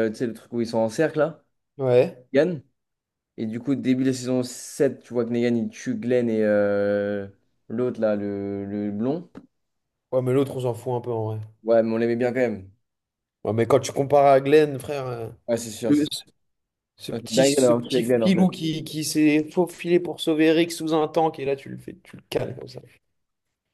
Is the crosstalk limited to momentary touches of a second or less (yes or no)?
no